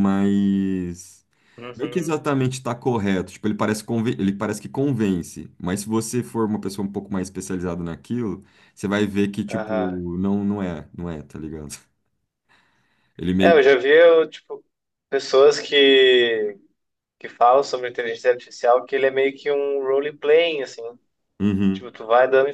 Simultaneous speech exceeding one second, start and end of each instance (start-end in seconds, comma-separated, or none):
none